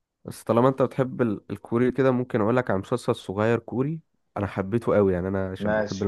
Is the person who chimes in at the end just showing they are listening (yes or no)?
yes